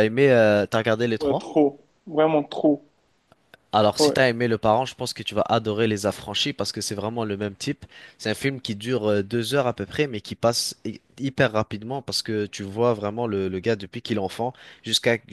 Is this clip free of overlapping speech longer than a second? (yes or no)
yes